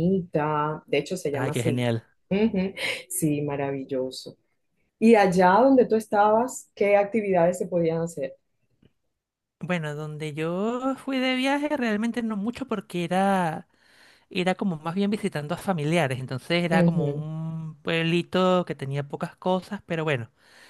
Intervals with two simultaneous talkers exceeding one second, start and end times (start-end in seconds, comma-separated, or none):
none